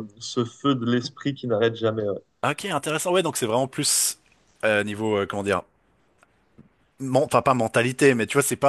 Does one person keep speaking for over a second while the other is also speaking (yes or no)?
no